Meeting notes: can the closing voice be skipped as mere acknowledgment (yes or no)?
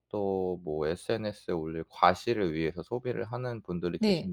yes